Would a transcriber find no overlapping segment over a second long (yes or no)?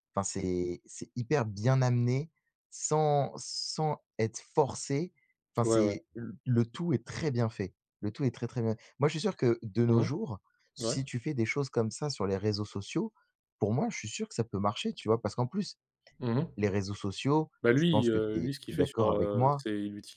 no